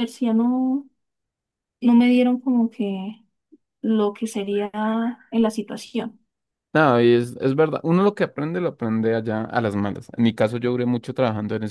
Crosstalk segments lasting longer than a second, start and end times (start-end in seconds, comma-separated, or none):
none